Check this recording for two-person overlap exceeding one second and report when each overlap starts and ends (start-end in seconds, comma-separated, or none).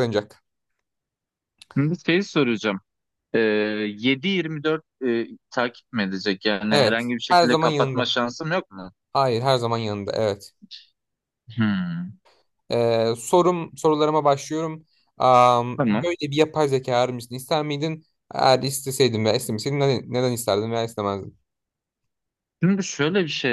6.7-8.1